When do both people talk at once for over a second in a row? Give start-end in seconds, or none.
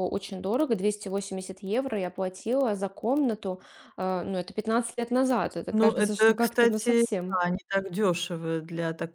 5.7-7.0